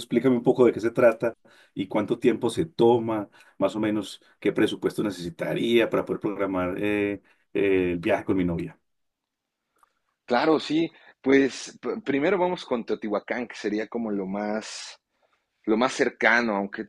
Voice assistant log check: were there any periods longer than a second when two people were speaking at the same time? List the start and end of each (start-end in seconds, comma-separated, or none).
none